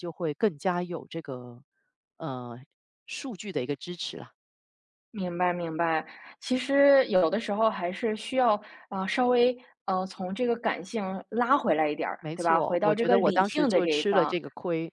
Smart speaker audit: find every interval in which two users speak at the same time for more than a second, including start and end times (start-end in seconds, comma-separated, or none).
12.2-14.3